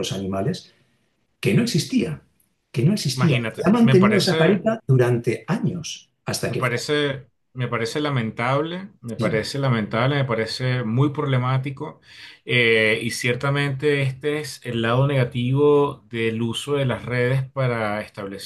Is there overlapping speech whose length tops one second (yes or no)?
yes